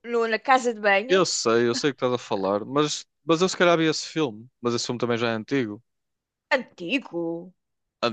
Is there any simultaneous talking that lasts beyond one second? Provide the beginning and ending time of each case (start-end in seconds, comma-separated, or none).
none